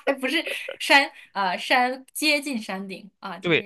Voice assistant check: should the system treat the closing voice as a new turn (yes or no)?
yes